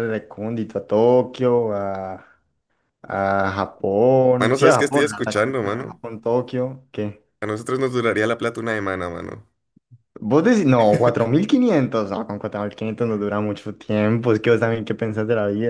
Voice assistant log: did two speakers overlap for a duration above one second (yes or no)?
yes